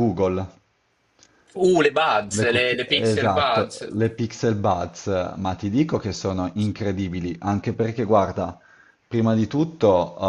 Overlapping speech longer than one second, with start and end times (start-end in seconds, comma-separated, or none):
2.3-3.9